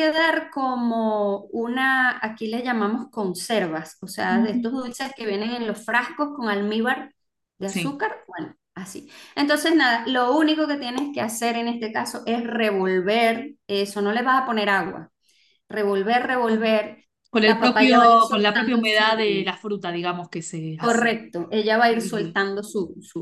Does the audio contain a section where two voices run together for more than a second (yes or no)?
yes